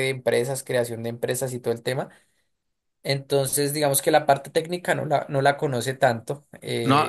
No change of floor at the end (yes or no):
no